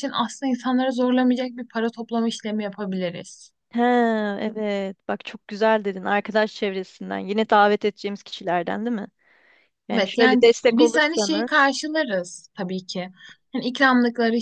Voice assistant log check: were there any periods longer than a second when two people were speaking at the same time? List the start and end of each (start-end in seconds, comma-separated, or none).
9.9-11.7